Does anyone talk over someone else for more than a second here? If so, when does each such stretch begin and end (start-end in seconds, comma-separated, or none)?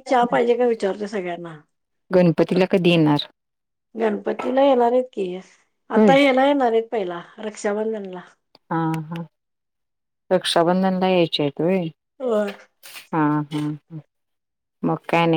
none